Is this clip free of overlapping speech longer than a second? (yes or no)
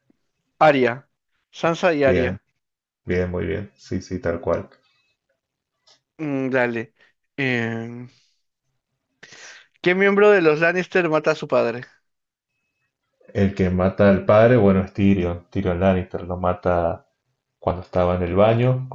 yes